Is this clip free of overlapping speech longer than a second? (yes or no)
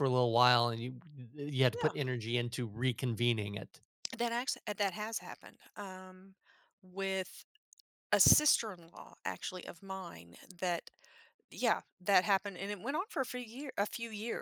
yes